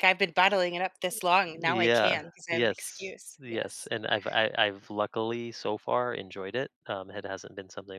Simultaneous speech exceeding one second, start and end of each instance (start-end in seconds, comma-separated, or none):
1.5-3.9